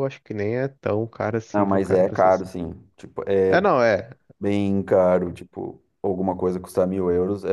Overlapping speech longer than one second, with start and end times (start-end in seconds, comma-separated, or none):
1.5-2.7